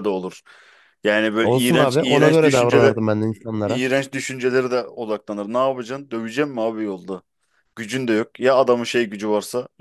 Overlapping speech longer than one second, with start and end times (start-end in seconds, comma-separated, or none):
1.4-3.0